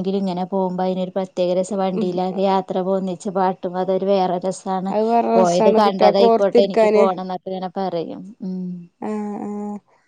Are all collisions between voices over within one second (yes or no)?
no